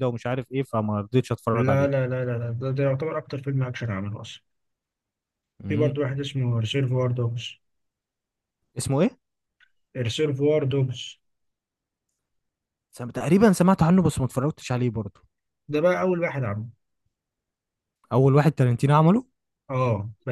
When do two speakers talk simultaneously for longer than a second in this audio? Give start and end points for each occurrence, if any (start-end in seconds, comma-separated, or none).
none